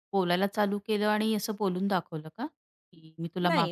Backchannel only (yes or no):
no